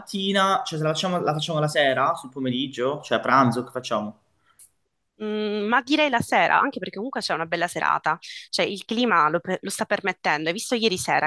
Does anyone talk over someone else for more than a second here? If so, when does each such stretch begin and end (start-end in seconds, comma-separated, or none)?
none